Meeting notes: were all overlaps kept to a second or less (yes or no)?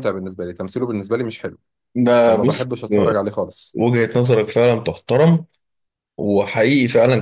yes